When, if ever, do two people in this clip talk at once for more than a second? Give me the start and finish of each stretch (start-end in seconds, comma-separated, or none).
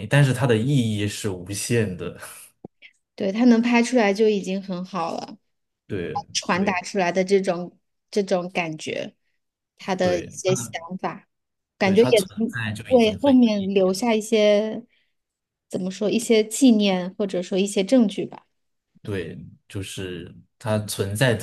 11.8-14.1